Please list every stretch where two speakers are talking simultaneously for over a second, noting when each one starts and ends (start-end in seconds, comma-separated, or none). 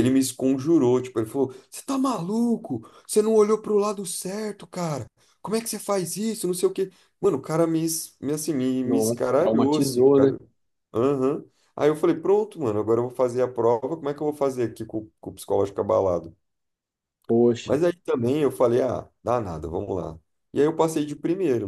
8.8-10.3